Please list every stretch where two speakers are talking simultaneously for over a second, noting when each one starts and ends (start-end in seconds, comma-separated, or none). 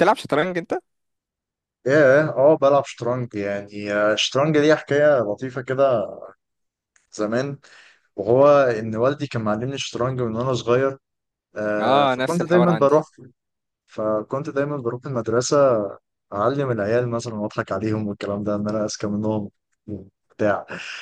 11.8-13.0